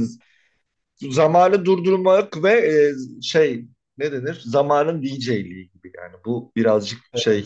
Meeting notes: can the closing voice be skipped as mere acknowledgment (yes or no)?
yes